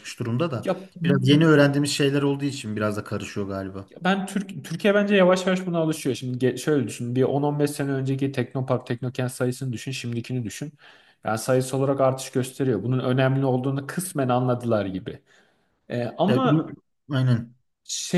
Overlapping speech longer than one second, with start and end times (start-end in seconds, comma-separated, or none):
none